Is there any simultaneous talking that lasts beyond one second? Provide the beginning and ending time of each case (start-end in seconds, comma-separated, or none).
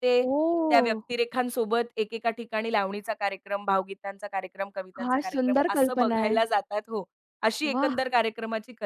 5.0-6.4